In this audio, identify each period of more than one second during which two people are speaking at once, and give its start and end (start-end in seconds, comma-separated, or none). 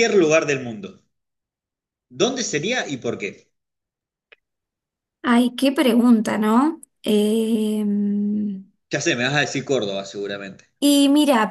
none